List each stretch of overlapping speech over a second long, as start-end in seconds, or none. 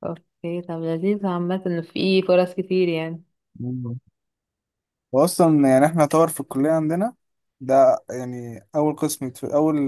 none